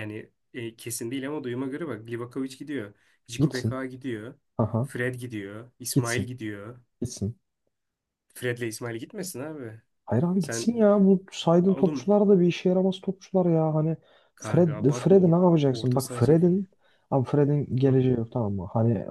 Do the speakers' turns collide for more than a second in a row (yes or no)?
yes